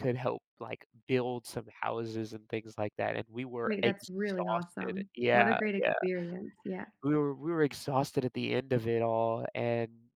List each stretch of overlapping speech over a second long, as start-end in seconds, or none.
3.6-5.9